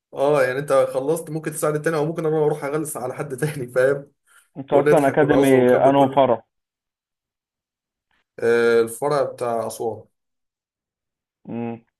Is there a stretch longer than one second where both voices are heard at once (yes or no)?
yes